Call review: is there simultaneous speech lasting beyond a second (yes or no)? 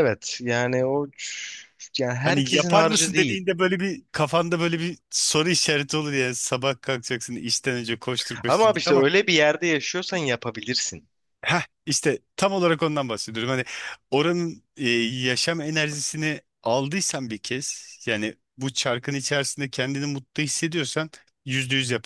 yes